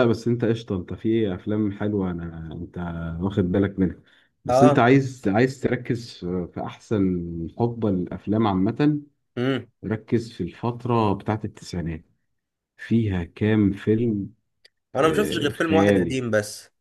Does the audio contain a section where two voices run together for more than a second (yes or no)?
yes